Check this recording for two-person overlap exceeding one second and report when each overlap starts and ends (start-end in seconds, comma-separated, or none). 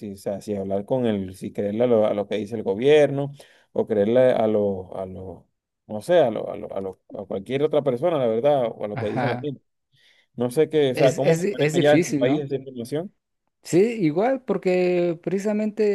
10.9-12.5